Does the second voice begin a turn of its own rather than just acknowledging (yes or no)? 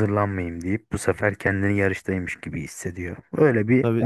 yes